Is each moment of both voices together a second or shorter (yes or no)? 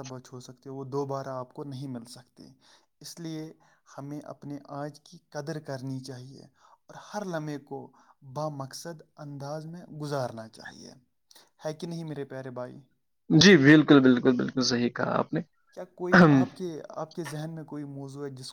yes